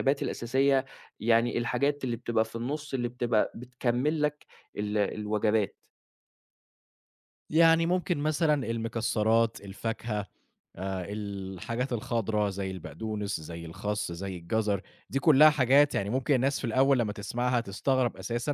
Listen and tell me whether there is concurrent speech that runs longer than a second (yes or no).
no